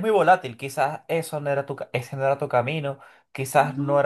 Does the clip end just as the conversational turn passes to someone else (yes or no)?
no